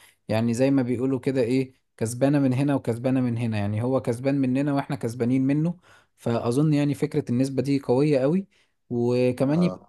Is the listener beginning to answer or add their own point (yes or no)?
no